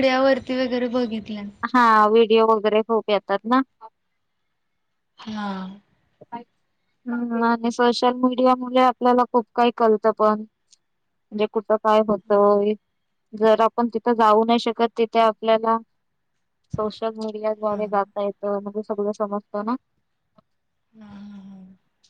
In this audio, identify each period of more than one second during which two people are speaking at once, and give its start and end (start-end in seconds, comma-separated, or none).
none